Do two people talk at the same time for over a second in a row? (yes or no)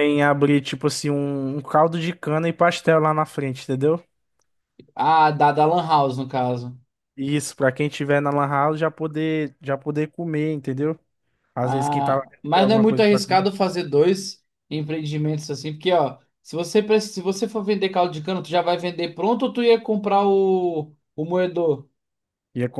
yes